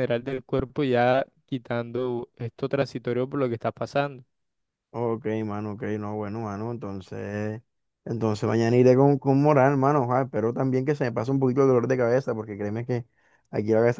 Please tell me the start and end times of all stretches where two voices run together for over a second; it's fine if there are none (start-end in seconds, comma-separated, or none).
none